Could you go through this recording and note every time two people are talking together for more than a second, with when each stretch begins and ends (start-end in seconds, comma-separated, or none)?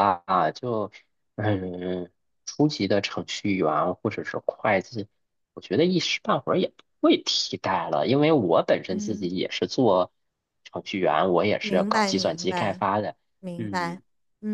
11.6-12.8